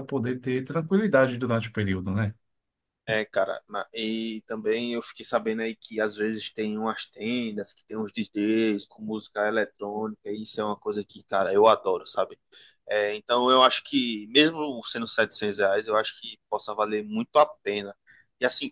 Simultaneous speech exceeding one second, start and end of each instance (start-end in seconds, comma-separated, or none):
none